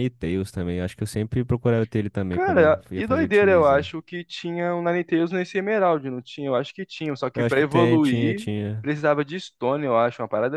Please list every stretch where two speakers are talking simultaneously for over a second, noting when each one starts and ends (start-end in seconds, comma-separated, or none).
2.3-3.9, 7.3-8.9